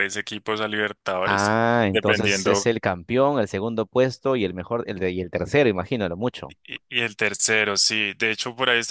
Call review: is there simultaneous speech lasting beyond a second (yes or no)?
yes